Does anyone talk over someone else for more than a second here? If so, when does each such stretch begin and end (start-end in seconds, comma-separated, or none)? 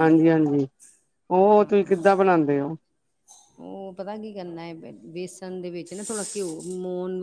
none